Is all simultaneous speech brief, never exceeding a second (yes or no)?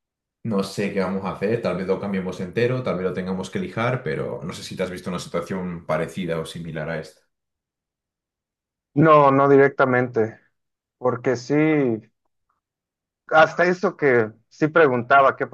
yes